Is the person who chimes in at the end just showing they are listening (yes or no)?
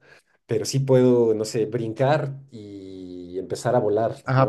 no